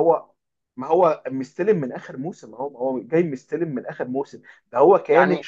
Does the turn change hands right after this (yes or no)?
no